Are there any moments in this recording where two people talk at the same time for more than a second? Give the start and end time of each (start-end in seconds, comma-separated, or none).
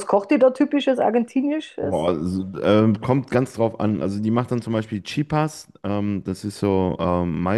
none